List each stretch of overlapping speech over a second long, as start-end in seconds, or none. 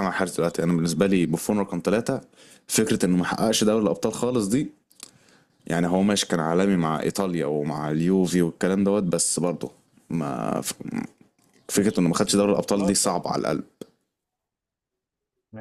11.8-13.2